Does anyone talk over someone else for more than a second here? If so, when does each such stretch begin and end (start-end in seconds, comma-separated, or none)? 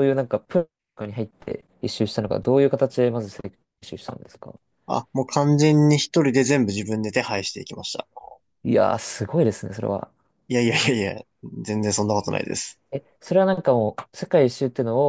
none